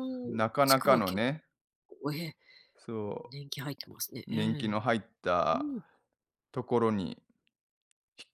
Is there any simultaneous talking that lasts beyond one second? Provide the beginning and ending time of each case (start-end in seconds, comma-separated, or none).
none